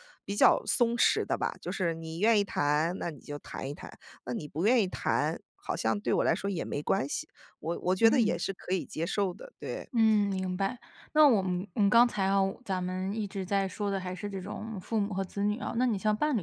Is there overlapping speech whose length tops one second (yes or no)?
no